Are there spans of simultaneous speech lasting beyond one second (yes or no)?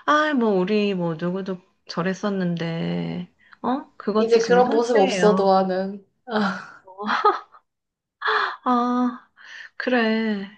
yes